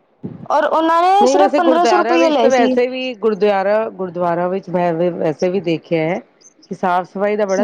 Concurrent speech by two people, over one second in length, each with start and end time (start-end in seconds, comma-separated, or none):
1.2-2.7